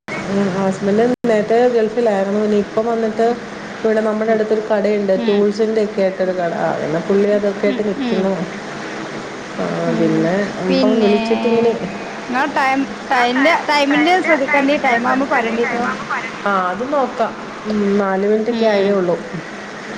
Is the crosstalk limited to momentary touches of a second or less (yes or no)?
no